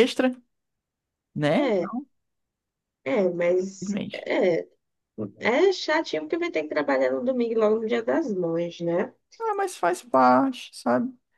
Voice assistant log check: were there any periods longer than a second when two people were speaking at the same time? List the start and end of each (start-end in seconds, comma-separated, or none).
none